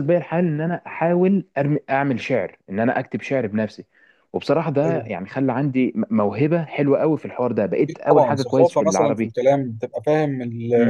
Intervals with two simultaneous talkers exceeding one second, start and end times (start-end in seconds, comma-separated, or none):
7.9-9.3